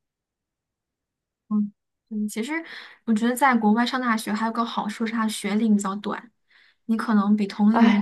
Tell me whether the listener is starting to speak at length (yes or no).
yes